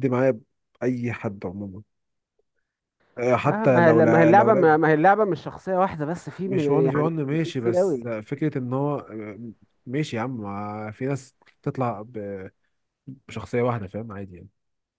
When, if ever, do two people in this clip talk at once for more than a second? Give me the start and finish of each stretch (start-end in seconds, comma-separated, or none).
3.5-4.8, 6.5-8.1